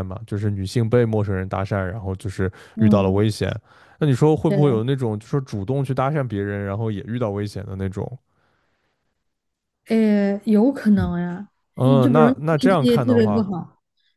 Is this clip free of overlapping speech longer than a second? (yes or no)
no